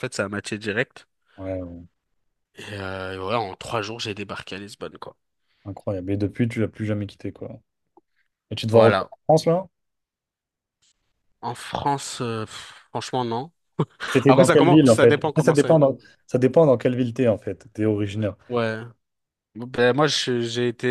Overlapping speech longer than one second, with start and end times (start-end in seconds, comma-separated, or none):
14.3-15.9